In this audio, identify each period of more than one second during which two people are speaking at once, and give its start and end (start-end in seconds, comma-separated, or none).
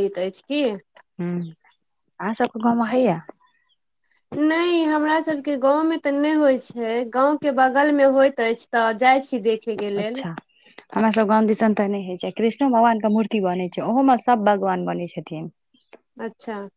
none